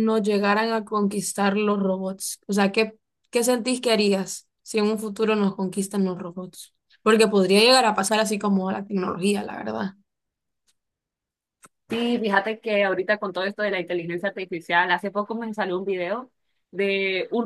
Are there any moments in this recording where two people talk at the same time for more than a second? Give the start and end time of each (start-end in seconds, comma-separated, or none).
none